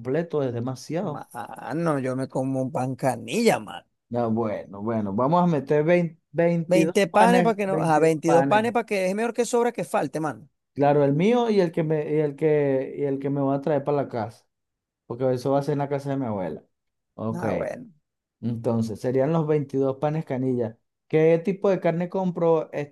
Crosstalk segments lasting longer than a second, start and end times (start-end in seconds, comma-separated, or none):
6.7-8.7